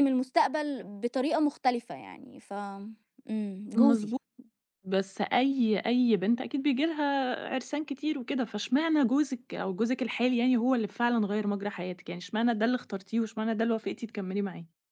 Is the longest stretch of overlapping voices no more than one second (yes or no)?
yes